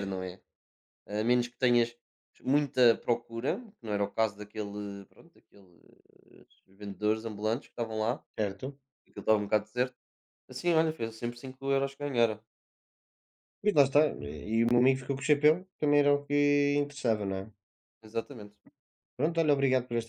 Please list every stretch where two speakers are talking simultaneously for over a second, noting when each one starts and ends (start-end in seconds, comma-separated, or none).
none